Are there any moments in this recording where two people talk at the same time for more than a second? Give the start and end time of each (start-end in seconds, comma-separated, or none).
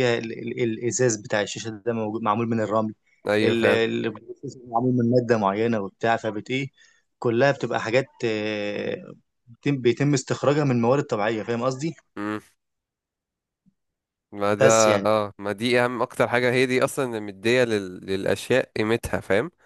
none